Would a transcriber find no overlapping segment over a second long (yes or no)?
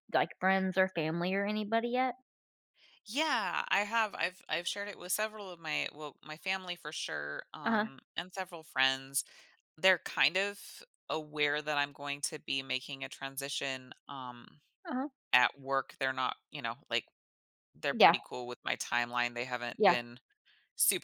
yes